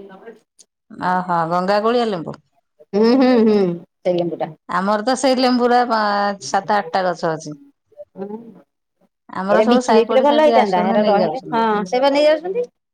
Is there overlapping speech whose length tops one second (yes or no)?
yes